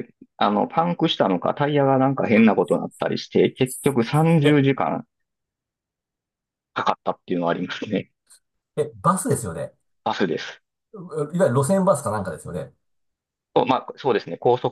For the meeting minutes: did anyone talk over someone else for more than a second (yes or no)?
no